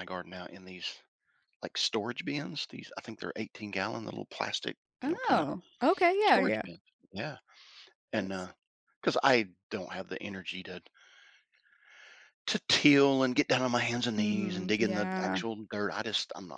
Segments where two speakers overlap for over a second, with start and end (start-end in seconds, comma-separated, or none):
14.2-15.4